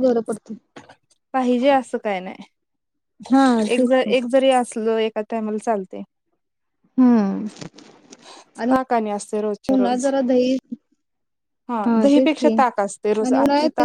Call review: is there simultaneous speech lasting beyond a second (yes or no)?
yes